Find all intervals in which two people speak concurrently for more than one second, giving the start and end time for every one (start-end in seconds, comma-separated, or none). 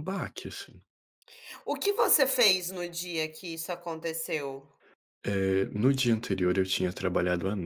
none